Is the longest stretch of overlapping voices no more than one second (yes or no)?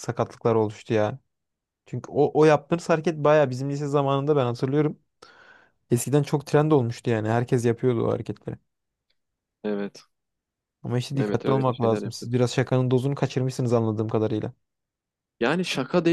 no